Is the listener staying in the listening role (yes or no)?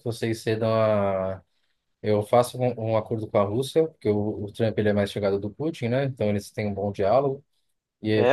no